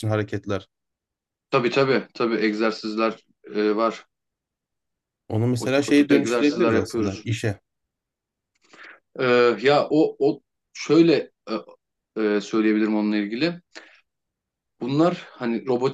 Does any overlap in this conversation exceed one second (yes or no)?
yes